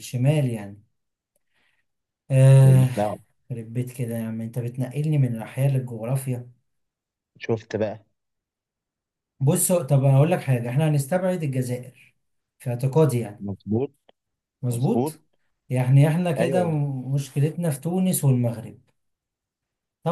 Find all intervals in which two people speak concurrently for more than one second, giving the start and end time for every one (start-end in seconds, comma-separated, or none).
none